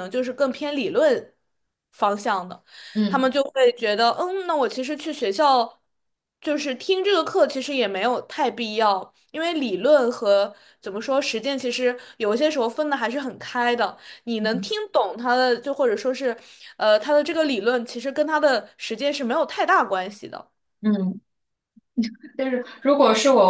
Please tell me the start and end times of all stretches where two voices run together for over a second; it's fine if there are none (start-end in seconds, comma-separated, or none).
none